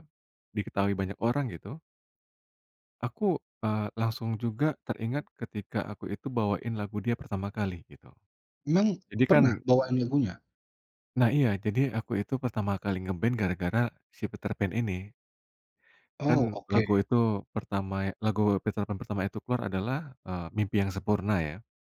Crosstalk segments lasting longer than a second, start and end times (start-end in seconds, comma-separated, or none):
none